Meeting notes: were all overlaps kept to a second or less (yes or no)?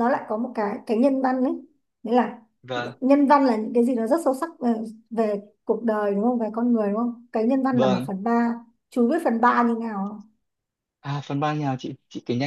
yes